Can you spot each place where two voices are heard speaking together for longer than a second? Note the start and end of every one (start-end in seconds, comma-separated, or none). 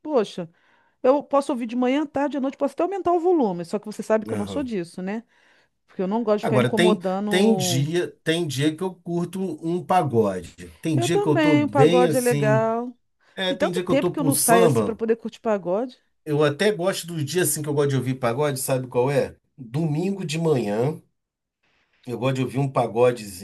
6.4-7.9, 10.9-12.7, 13.4-15.0